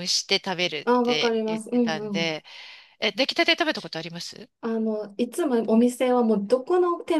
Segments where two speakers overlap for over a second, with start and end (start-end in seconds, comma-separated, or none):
0.8-2.4